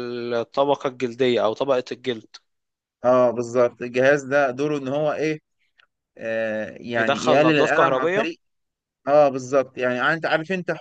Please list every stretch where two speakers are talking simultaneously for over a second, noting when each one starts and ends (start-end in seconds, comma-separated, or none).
7.0-8.3